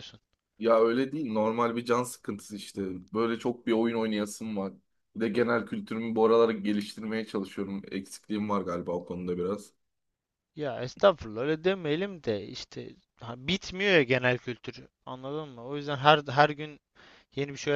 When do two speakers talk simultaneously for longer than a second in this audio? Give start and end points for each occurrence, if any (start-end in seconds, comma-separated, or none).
none